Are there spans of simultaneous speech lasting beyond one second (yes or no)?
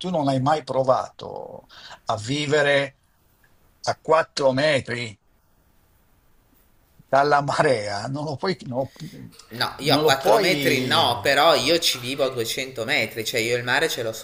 yes